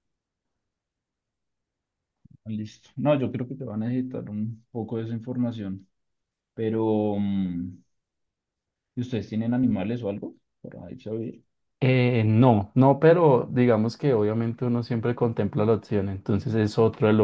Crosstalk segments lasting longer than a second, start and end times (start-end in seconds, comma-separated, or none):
none